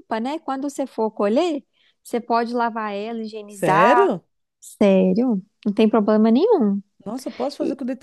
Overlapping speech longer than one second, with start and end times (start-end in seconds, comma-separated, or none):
none